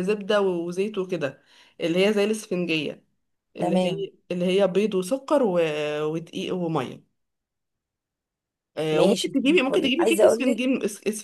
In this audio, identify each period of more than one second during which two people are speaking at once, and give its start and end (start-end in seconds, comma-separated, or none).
8.9-10.6